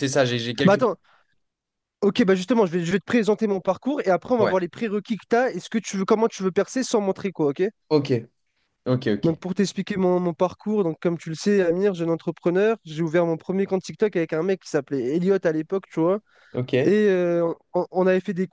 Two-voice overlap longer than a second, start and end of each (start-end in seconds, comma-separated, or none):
none